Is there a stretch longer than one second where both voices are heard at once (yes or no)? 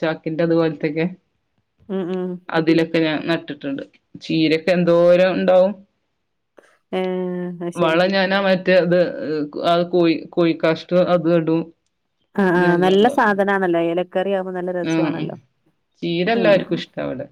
no